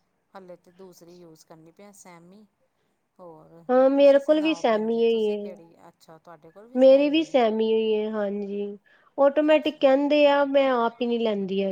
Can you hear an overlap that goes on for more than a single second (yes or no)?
yes